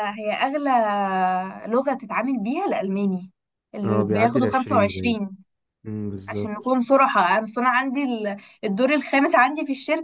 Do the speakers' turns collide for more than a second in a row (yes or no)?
yes